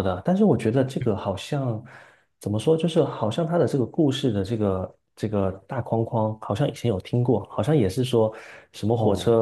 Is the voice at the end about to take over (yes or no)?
no